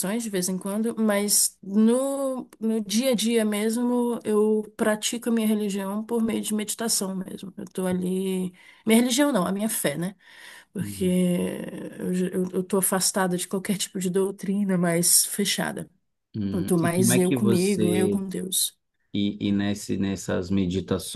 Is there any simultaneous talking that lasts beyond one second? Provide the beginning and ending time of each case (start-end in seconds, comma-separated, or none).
16.5-18.2